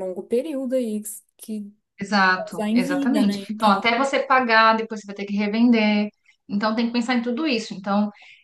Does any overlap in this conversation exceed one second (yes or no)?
yes